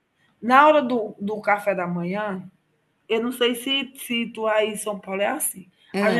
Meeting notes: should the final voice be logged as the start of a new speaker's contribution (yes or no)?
no